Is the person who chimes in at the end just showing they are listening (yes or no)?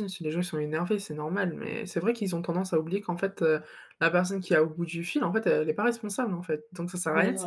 no